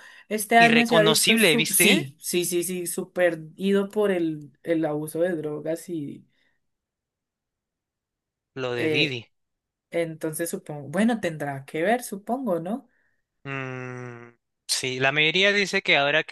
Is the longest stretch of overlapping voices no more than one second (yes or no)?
no